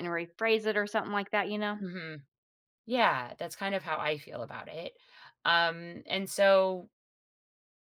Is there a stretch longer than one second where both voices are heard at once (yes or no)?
no